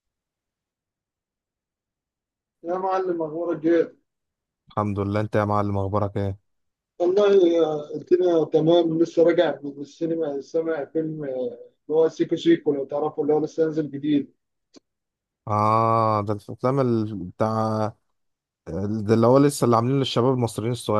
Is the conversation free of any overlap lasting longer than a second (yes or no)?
yes